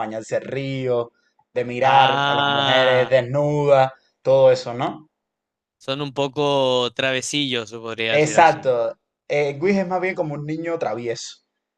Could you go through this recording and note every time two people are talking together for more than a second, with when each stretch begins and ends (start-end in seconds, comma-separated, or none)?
1.8-3.2